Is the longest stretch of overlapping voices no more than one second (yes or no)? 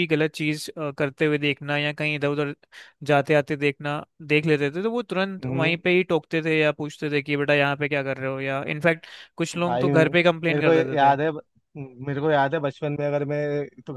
no